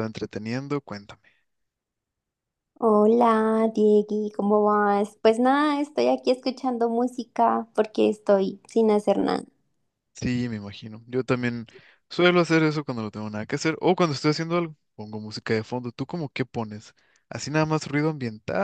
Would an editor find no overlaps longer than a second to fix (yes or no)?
yes